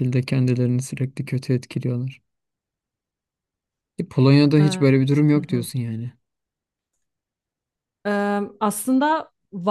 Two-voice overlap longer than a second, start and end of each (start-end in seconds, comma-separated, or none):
none